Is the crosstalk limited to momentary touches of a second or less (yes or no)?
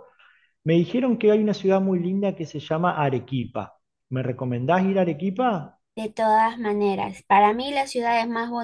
yes